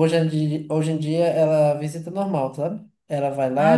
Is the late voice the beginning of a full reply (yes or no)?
no